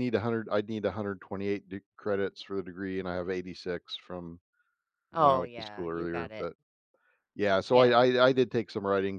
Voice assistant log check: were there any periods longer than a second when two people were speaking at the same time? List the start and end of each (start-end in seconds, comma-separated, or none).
5.1-6.5